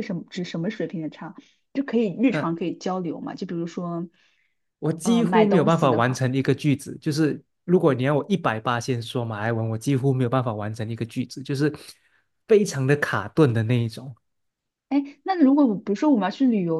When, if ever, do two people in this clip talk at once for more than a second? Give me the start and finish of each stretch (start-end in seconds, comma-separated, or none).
5.0-6.2